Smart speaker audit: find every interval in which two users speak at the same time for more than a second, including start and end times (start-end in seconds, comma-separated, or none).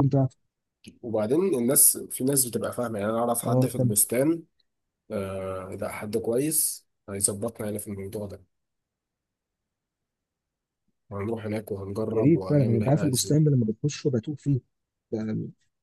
12.1-13.4